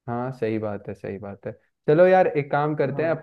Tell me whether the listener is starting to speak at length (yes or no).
no